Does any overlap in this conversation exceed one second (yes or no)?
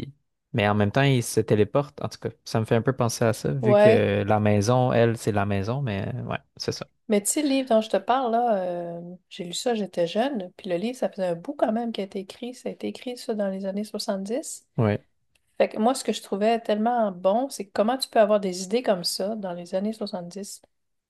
no